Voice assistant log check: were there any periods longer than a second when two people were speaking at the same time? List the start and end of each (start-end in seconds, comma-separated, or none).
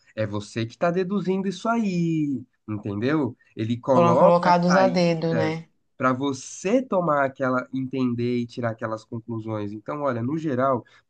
3.9-5.7